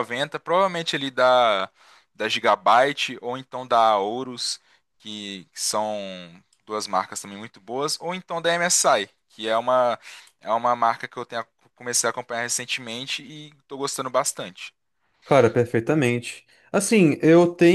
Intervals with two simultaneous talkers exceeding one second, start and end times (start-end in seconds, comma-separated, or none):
none